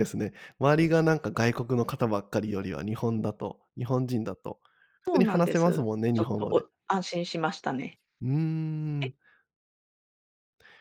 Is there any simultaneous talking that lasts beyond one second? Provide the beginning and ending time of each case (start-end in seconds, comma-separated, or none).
5.1-6.7